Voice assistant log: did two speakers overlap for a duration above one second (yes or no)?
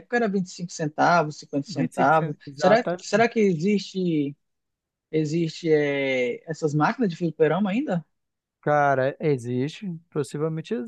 yes